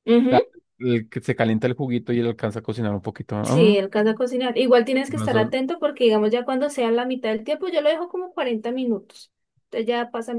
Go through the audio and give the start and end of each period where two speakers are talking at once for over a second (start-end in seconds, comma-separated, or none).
none